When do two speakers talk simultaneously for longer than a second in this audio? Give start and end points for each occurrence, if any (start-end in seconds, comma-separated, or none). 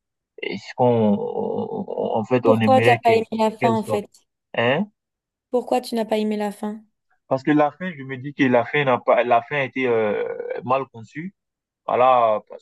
2.4-4.0